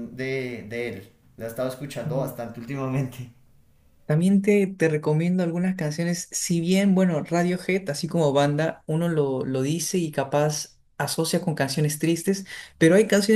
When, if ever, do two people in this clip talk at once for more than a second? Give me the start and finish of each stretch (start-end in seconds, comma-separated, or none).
none